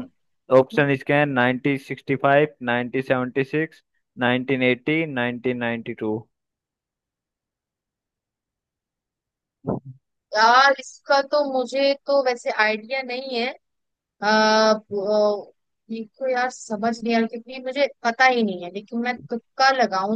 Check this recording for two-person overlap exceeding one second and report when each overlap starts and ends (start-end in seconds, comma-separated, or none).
none